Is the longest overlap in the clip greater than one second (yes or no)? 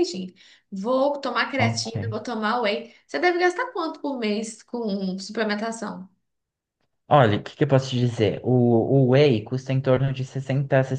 no